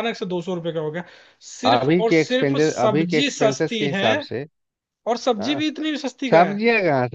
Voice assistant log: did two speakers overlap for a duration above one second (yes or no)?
yes